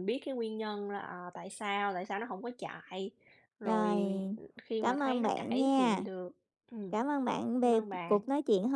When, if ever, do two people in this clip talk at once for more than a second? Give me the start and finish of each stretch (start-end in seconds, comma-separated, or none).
4.8-6.0